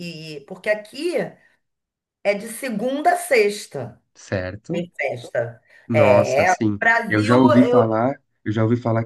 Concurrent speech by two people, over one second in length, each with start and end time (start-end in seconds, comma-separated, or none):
5.9-7.9